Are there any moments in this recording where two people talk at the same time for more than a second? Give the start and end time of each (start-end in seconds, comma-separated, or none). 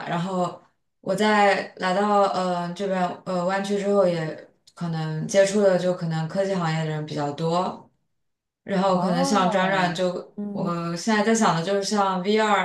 8.9-10.7